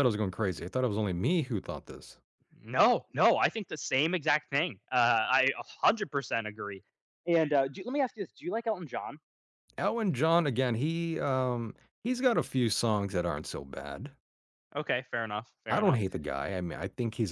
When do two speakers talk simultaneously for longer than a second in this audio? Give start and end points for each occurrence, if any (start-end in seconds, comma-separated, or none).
none